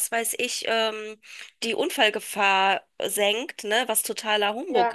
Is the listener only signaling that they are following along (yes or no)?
yes